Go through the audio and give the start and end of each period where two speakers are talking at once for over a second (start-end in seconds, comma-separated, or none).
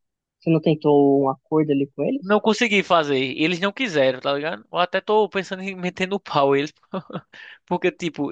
none